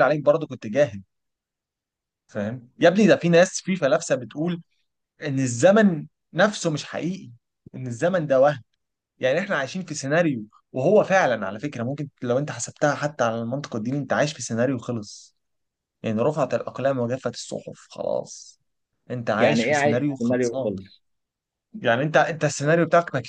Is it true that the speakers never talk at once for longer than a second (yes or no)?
no